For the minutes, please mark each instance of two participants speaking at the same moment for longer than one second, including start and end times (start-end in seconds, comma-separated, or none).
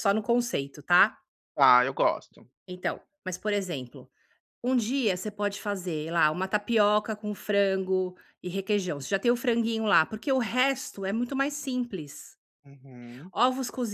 none